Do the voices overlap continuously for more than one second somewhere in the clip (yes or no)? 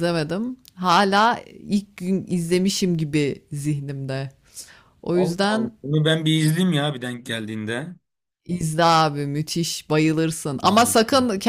no